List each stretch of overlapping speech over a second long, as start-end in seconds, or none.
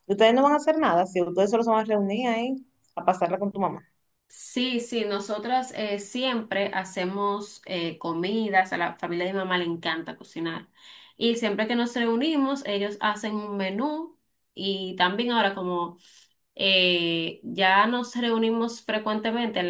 none